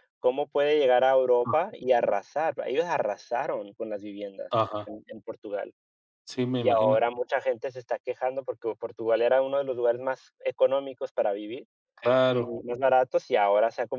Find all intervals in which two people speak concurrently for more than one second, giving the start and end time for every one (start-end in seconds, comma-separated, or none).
none